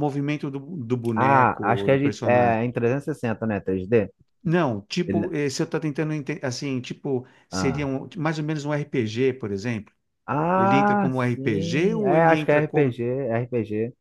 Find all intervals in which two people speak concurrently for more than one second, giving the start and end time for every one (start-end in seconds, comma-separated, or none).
1.1-2.6, 10.6-13.0